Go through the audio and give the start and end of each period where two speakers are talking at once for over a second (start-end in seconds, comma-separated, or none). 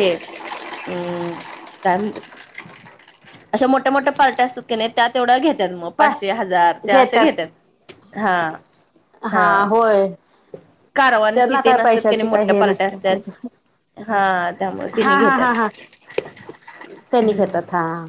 11.3-13.2